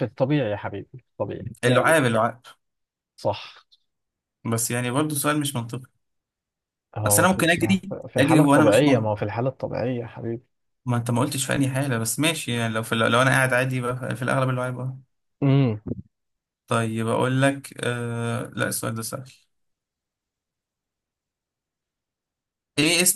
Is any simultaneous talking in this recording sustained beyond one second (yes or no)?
yes